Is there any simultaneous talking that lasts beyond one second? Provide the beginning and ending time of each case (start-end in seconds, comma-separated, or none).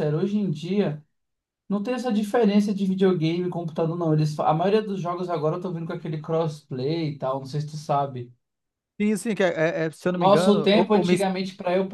10.1-11.2